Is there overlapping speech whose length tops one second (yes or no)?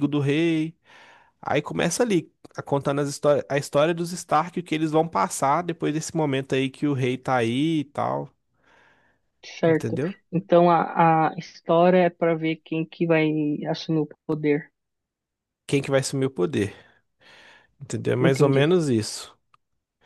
no